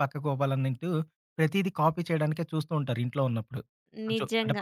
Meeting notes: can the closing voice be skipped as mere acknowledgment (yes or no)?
no